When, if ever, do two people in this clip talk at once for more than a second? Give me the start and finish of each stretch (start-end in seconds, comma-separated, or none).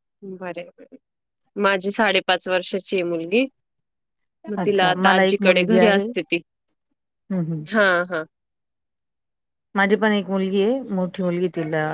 4.6-6.0